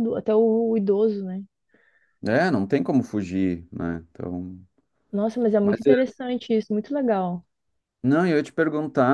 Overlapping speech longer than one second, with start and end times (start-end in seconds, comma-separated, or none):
none